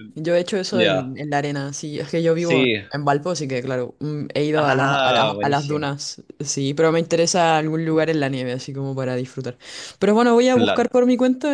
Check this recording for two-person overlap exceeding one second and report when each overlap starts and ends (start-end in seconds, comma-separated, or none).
4.5-5.9